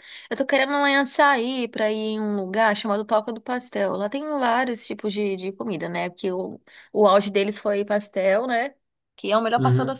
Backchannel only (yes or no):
yes